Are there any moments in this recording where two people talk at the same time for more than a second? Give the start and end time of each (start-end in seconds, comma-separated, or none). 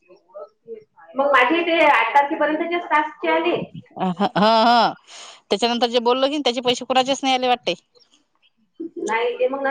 none